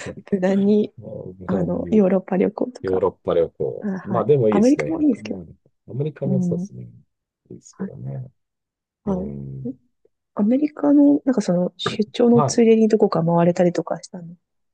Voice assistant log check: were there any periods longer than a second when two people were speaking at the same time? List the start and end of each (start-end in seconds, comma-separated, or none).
3.8-5.4